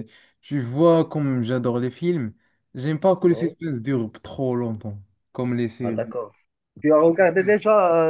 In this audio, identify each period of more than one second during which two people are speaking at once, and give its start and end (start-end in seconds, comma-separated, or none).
none